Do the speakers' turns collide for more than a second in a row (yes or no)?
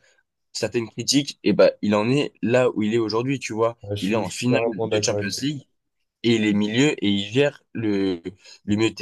yes